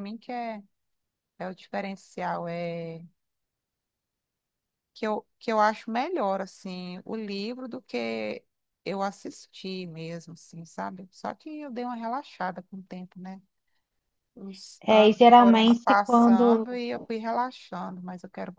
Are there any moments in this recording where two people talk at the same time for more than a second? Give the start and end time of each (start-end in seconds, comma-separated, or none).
14.8-16.6